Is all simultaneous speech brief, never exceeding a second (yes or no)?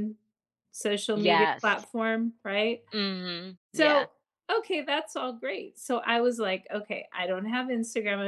yes